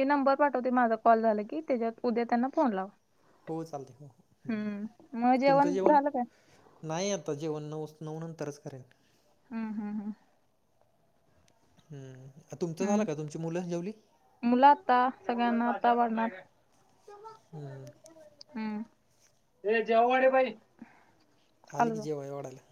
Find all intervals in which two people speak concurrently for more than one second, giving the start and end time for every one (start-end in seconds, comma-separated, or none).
none